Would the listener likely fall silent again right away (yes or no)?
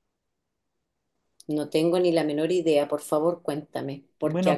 no